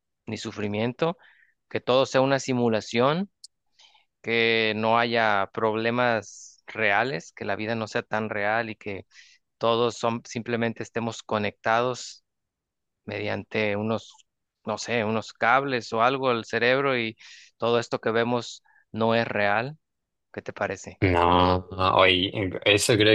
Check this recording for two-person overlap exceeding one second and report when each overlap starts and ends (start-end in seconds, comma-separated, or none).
none